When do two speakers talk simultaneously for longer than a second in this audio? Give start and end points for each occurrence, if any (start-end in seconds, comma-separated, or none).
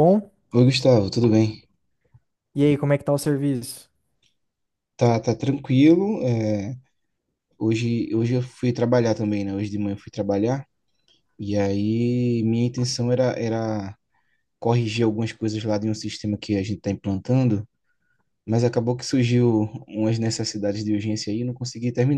none